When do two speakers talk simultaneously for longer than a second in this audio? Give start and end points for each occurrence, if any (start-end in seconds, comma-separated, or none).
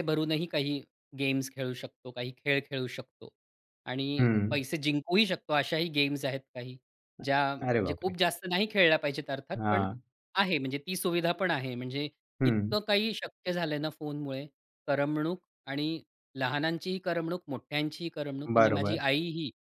none